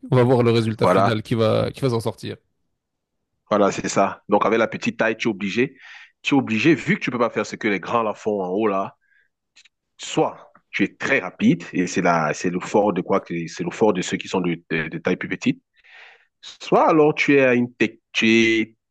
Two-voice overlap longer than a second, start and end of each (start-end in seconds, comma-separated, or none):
none